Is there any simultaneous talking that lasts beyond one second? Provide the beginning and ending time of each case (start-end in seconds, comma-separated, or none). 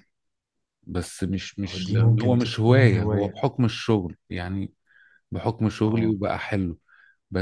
1.7-3.3